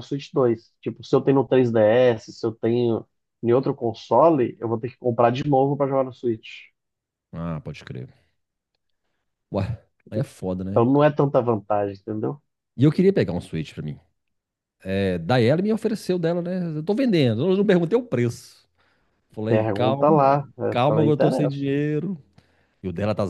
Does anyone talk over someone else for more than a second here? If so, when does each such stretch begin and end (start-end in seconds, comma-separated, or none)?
19.5-21.6